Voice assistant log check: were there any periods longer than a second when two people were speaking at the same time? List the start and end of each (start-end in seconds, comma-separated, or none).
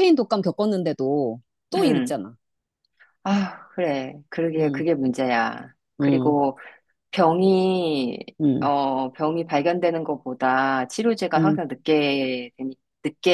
none